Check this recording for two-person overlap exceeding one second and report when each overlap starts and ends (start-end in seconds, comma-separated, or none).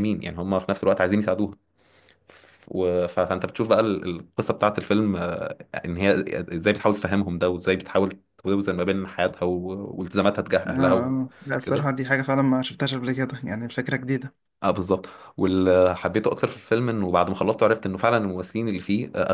10.7-12.0